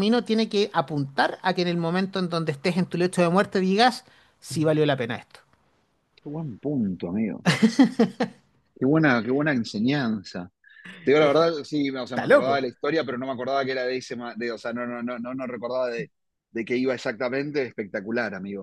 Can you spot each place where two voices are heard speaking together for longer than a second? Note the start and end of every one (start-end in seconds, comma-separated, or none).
none